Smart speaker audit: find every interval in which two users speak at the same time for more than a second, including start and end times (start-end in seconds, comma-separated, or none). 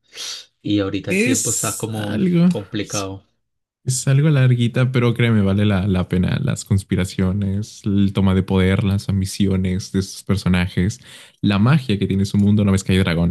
1.1-3.1